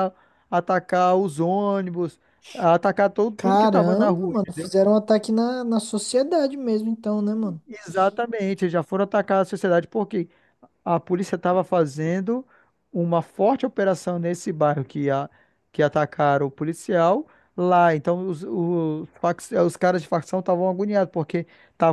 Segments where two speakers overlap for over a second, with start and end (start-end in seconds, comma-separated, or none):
3.4-4.7